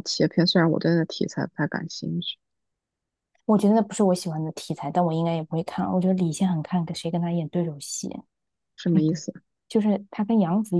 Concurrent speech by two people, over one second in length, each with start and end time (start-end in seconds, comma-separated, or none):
none